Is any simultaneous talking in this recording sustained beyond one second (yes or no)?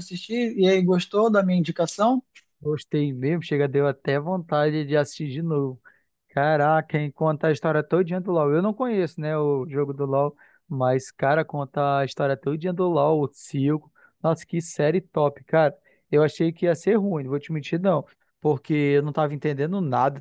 no